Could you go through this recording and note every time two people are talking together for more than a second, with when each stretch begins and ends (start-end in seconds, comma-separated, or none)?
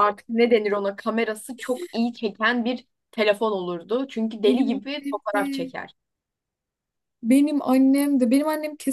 4.5-5.7